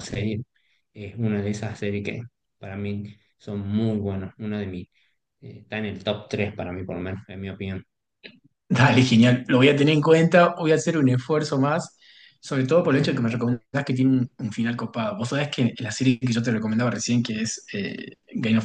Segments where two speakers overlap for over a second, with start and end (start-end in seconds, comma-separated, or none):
none